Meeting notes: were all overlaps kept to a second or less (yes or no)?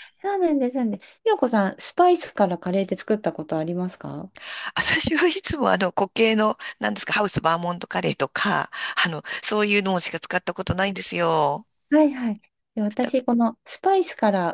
yes